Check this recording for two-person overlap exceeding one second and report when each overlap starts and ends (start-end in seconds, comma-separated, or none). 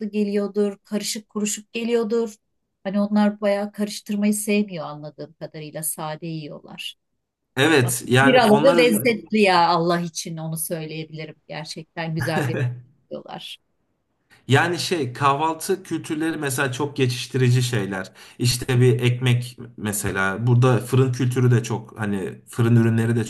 7.8-9.1